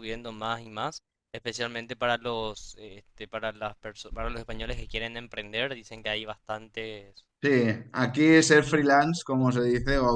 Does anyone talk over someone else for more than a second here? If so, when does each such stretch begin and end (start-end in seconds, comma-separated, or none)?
none